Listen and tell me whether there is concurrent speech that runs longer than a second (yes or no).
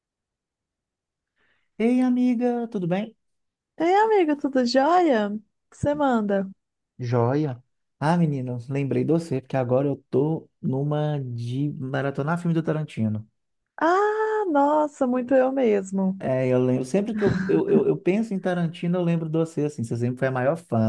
no